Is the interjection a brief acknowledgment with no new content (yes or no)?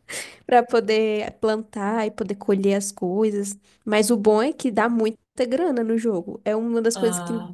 yes